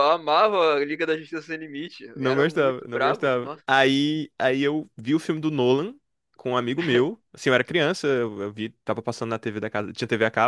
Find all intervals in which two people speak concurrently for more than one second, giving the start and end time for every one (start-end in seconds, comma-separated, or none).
2.1-3.6